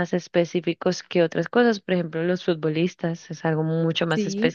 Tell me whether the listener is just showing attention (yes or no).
yes